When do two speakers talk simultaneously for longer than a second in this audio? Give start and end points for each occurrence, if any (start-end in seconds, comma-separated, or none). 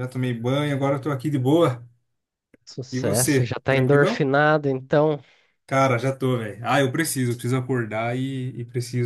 2.9-4.3